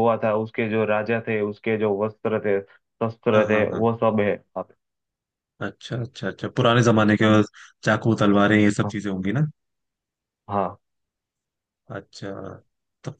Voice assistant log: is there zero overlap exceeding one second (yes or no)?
yes